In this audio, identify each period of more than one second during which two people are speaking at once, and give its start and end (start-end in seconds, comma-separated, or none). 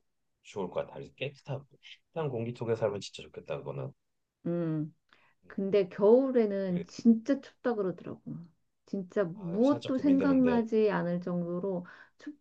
9.3-10.6